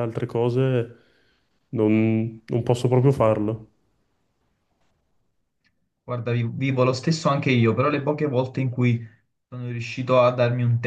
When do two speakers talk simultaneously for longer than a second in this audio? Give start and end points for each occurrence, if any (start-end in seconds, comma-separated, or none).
none